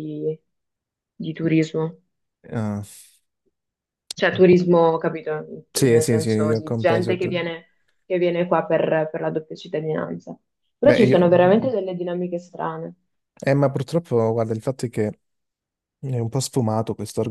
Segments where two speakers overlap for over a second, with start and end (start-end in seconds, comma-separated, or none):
5.7-7.2